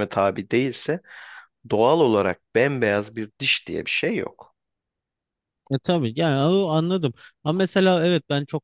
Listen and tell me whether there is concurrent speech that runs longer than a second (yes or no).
no